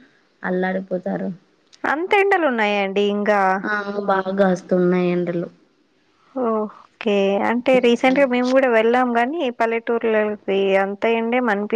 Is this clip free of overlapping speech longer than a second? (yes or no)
yes